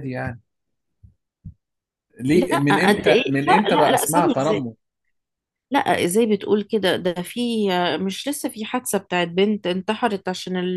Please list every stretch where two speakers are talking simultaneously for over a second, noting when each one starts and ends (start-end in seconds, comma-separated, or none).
2.4-4.3